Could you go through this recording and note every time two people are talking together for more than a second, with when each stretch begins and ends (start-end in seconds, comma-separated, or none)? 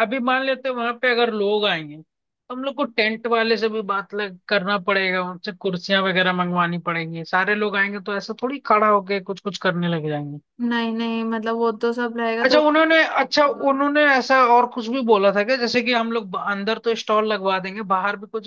none